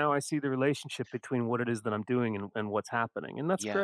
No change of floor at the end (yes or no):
no